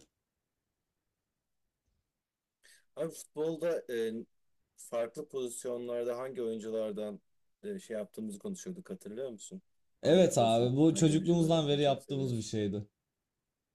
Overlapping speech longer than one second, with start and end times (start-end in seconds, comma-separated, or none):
10.0-12.5